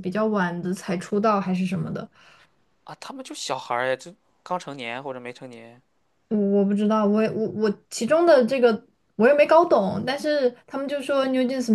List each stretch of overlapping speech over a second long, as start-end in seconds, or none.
none